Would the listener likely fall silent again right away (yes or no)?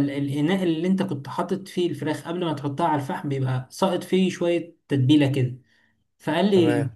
yes